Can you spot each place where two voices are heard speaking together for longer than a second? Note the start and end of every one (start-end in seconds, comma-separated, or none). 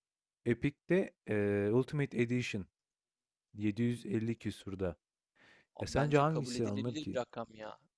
5.8-7.2